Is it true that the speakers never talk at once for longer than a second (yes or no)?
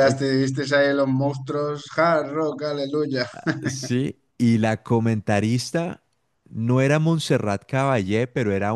yes